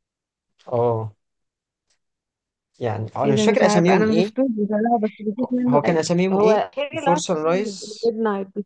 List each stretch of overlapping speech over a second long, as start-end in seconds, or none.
3.2-4.5, 5.4-7.2